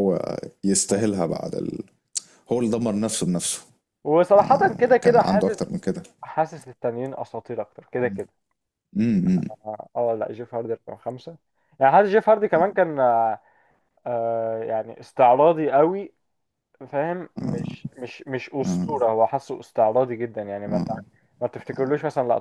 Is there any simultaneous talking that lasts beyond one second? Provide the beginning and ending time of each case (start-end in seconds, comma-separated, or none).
4.3-5.8